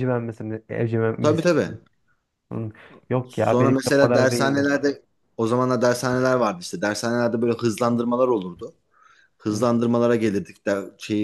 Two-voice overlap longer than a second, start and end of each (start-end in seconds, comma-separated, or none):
3.2-4.7